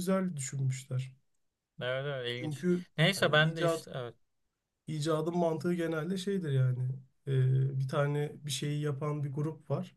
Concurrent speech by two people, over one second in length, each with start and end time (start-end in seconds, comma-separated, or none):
2.3-3.9